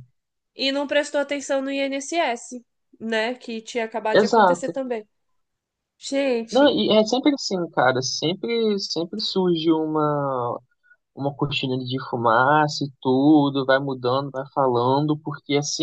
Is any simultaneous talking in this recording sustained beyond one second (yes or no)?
no